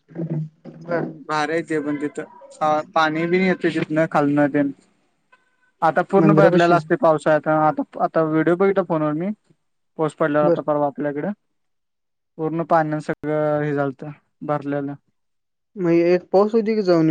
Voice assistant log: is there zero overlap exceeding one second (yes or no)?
yes